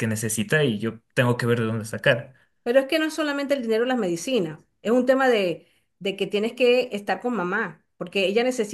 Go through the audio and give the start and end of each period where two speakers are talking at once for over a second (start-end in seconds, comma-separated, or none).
none